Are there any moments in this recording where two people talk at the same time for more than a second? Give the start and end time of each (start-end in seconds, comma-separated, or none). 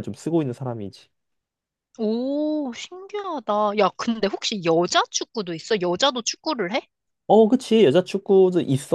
none